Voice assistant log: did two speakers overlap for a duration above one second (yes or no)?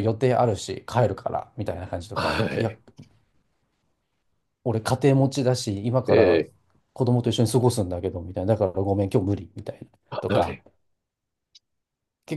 no